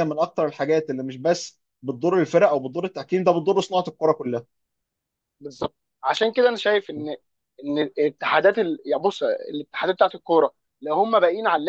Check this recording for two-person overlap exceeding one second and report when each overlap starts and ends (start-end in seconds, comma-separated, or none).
none